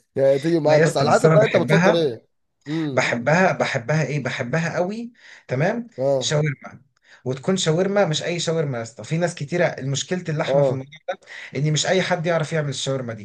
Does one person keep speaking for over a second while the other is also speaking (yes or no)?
yes